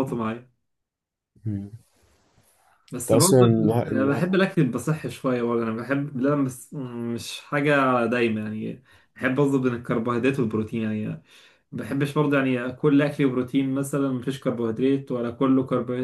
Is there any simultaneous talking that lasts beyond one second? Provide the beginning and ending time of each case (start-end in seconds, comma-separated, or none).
3.0-4.2